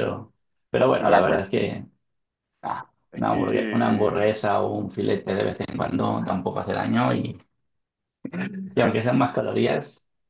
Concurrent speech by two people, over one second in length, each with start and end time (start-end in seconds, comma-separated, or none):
3.1-4.3